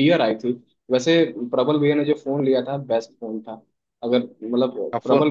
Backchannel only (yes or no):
yes